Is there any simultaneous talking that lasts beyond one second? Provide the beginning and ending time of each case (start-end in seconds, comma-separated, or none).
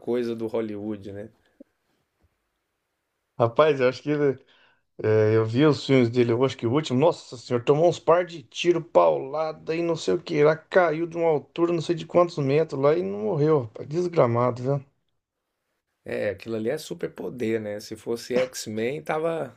none